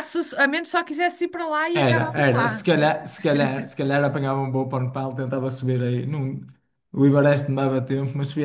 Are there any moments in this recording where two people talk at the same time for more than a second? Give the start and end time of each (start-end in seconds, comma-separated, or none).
1.7-3.0